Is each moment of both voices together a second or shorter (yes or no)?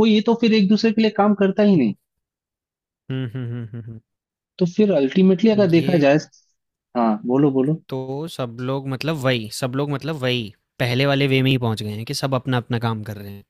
yes